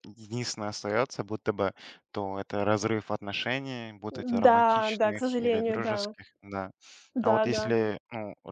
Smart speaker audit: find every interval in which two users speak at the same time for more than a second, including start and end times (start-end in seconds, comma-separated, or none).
4.4-6.1